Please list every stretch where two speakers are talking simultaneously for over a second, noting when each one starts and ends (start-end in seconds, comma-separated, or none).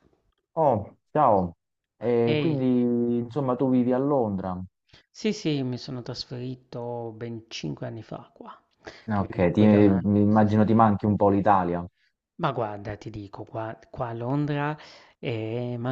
9.1-10.8